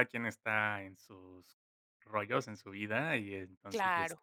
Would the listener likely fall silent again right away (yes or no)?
yes